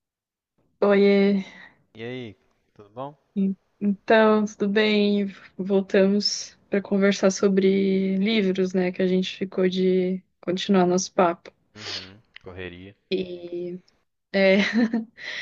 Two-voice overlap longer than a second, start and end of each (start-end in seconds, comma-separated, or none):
none